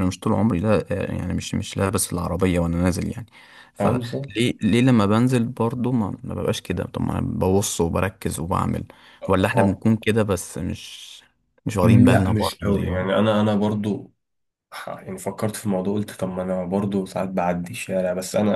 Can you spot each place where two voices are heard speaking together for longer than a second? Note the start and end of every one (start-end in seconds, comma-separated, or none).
11.8-13.2